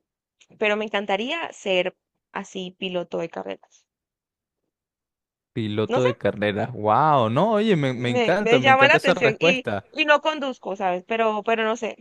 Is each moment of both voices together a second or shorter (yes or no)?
no